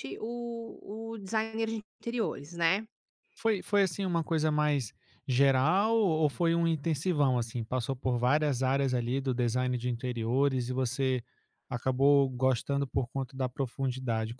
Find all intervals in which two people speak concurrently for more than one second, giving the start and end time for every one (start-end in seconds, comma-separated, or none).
none